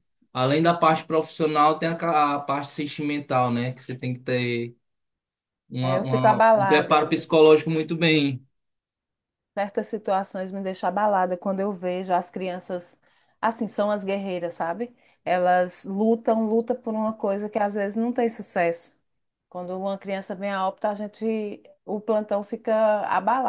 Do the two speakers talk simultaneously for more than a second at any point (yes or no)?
yes